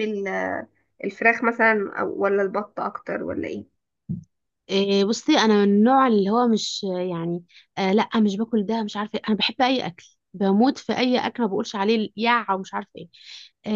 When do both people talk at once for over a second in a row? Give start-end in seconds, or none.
none